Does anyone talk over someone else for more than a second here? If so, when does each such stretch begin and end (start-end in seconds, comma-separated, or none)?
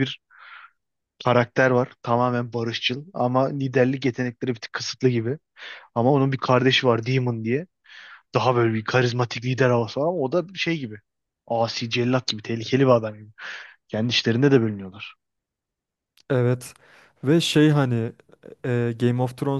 none